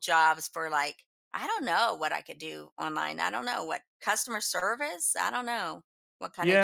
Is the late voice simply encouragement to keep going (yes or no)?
no